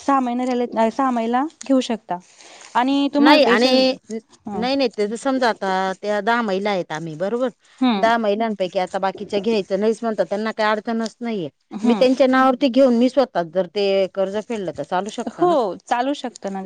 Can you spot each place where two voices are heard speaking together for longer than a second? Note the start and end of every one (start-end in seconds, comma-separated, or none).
none